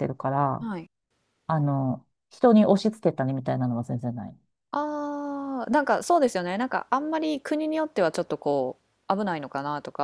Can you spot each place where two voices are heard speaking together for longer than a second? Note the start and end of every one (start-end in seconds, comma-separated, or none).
none